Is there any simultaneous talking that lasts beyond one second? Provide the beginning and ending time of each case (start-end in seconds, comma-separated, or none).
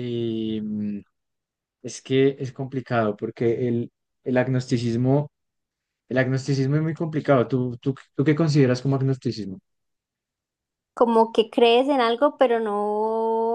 none